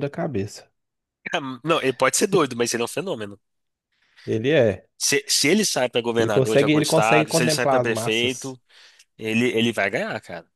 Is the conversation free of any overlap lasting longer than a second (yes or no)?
no